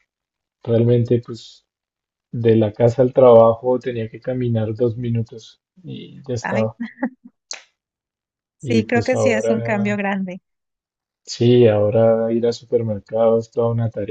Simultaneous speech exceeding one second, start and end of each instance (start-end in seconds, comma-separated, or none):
8.6-10.0